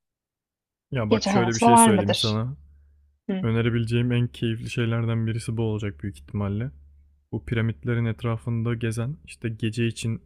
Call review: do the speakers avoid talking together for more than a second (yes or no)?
no